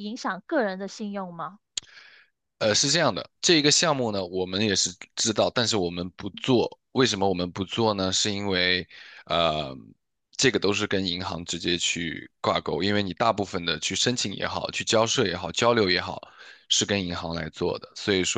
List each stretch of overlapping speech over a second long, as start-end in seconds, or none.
none